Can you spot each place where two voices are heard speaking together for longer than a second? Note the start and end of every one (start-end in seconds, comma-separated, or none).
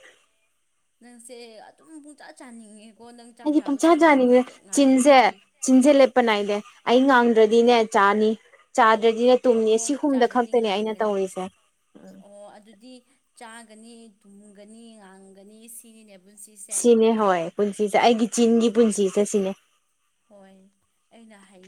9.6-11.2